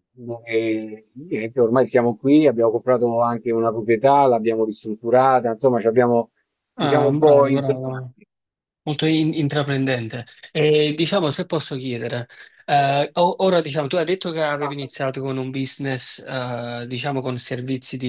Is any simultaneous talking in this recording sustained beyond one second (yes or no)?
yes